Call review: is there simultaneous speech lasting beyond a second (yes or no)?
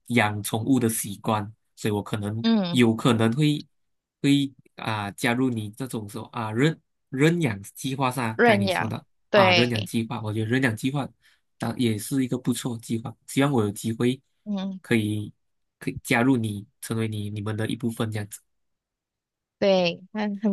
yes